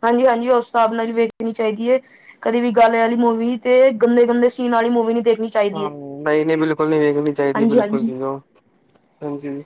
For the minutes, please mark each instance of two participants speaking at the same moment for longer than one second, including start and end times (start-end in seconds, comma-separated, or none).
none